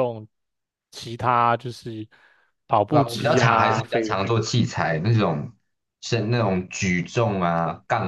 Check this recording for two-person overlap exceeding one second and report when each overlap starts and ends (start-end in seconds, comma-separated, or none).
2.9-4.2